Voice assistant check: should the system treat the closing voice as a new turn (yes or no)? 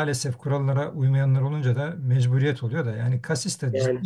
no